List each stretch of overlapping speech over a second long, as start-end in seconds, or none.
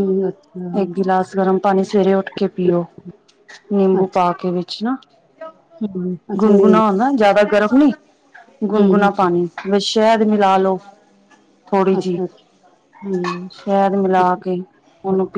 none